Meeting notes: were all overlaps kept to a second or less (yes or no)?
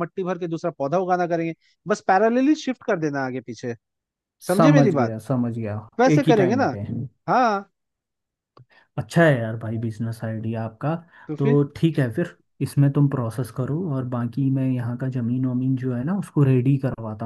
yes